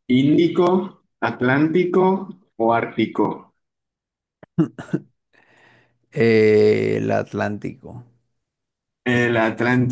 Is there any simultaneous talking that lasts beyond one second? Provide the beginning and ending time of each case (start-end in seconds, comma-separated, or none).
none